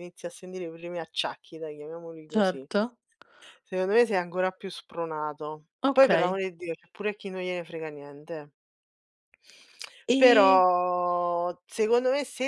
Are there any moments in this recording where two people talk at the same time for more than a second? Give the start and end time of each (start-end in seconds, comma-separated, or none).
none